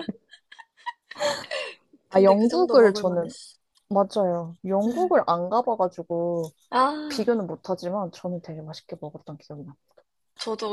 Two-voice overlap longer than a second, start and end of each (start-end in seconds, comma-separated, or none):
2.1-3.3